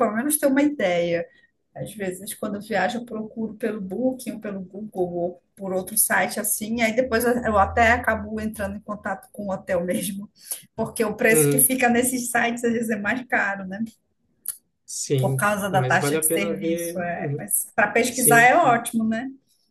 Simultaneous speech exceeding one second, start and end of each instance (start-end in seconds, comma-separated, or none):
15.2-17.5